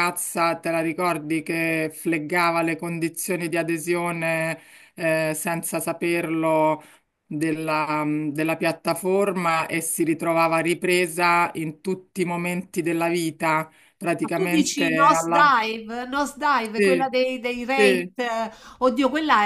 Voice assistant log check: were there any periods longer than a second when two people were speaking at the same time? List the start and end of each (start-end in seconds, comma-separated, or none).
14.2-15.5